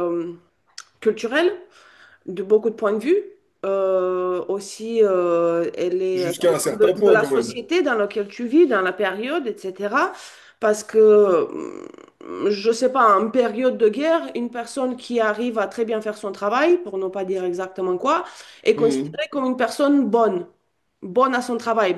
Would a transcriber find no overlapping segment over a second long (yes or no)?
no